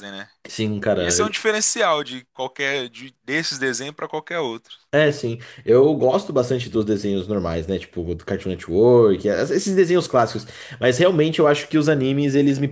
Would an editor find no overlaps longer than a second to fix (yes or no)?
yes